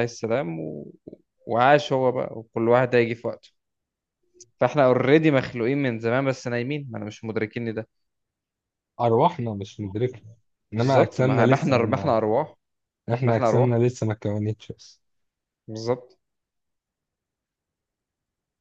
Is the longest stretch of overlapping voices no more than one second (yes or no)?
no